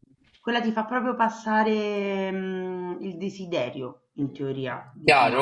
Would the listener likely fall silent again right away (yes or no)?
no